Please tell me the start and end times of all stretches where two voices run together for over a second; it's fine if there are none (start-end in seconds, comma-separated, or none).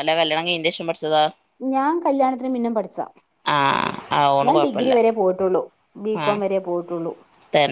none